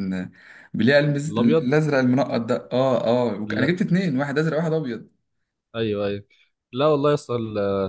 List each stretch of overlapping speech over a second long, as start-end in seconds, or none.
none